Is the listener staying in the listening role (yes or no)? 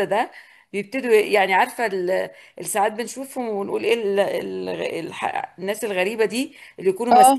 yes